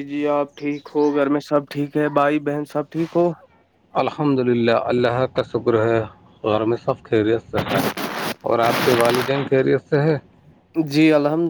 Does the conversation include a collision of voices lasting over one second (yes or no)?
no